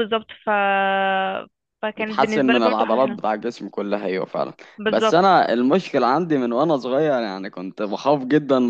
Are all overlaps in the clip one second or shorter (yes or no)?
no